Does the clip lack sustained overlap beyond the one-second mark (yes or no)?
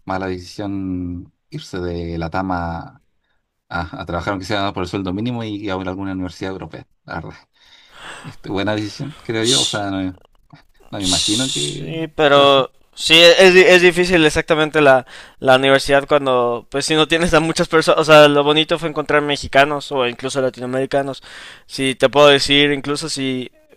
no